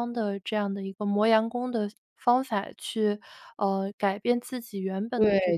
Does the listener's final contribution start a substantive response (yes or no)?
yes